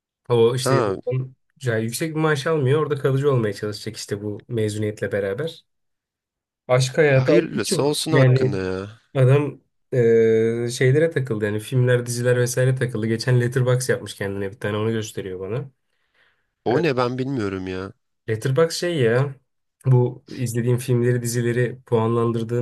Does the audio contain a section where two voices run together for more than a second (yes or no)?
yes